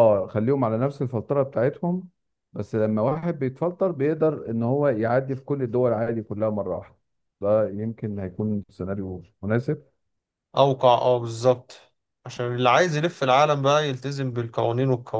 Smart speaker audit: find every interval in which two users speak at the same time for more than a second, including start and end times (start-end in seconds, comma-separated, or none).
none